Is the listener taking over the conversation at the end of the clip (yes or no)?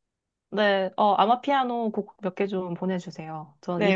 yes